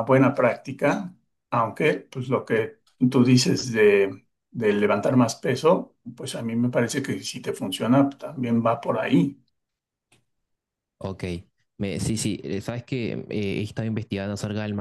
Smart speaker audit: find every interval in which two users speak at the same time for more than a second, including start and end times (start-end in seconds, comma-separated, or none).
none